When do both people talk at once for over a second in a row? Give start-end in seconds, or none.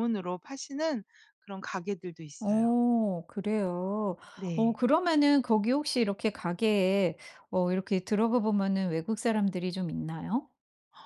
none